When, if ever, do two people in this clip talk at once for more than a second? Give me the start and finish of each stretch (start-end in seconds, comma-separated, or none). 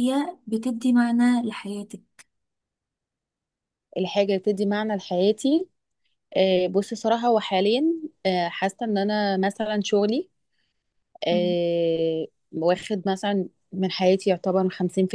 none